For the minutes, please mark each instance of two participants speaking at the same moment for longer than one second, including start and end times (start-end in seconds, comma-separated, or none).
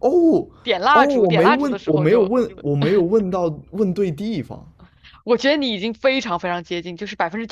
0.9-2.3